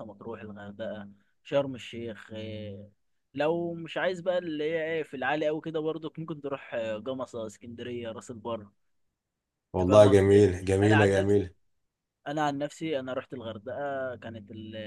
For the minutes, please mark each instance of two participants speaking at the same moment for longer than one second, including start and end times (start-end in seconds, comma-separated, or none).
9.8-11.4